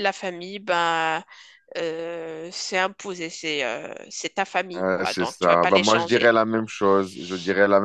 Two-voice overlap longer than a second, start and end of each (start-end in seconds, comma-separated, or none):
4.8-6.4